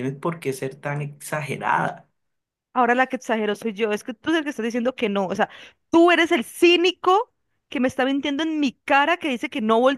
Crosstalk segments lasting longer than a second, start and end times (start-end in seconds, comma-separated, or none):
none